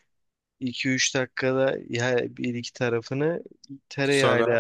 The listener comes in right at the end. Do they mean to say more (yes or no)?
no